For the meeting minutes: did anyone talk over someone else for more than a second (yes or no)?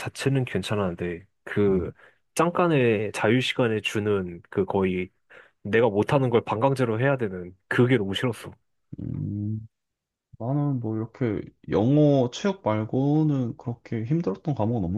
no